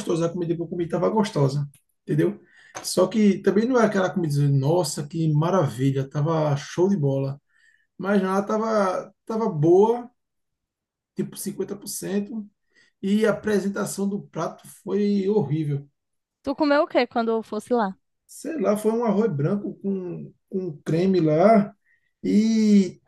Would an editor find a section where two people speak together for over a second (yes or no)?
no